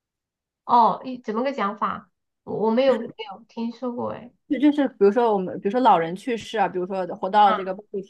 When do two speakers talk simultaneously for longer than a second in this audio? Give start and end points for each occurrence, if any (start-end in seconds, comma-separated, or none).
none